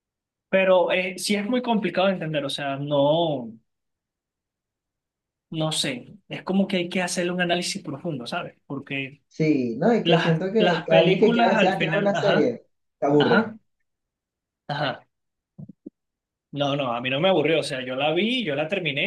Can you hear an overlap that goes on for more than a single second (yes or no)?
yes